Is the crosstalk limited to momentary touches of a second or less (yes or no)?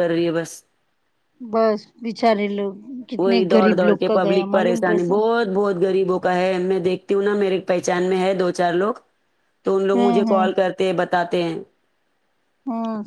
no